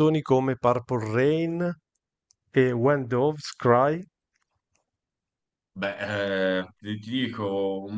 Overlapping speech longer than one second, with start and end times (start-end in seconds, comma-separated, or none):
none